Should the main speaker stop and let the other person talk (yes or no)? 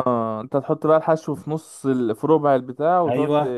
yes